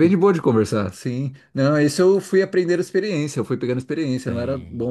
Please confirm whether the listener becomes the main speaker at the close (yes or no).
no